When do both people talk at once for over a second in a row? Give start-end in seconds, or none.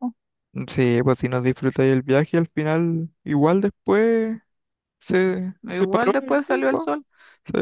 5.6-6.9